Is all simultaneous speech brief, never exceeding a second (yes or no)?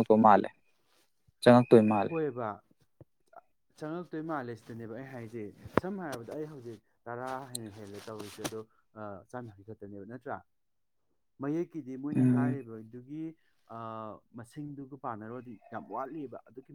yes